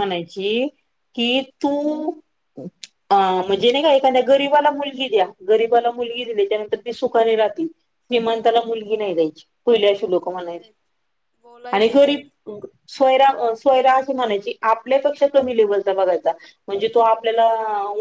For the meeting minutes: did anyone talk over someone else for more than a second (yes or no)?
no